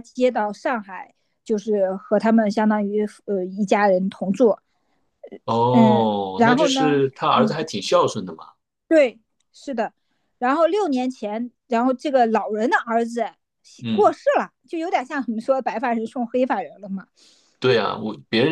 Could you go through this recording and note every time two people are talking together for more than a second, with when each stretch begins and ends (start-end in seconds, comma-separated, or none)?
5.7-7.7